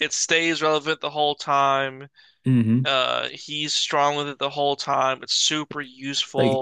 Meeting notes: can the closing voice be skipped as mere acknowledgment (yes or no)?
no